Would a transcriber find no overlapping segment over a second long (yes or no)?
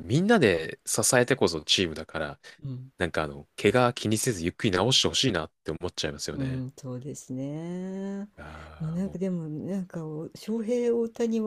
yes